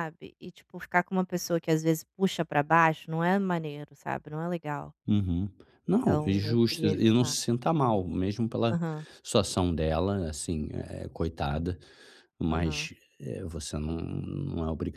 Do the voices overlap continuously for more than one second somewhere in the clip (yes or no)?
yes